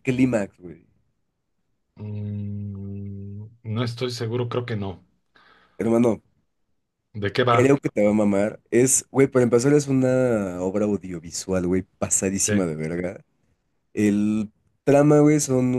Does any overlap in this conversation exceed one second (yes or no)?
no